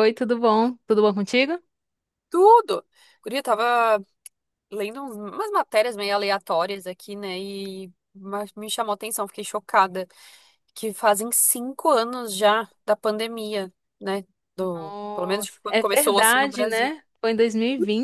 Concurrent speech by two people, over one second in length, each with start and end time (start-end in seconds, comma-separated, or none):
14.7-16.9